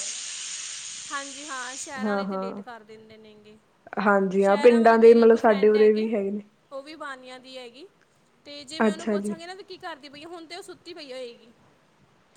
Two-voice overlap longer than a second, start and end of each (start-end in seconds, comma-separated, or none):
4.4-6.1